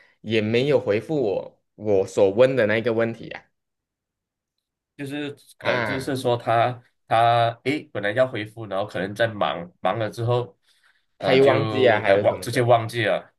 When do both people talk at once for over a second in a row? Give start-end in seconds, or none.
11.2-12.7